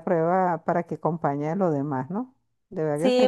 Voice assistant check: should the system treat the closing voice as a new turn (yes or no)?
yes